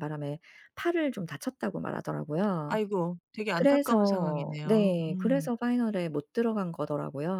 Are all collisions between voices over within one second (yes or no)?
no